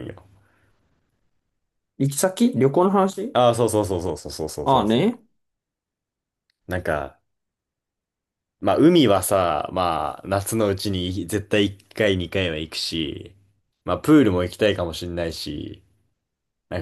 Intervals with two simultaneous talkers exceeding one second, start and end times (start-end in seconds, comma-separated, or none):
none